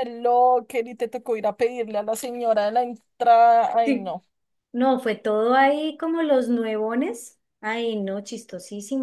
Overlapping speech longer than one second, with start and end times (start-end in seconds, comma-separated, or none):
none